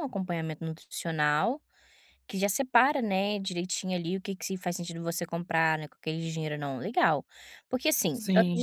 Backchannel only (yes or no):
yes